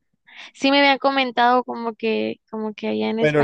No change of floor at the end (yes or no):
no